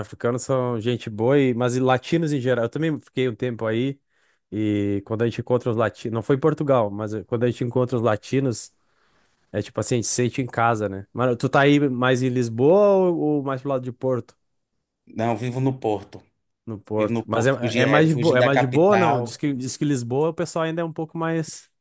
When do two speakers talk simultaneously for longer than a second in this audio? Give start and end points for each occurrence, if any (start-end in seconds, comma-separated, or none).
17.0-19.4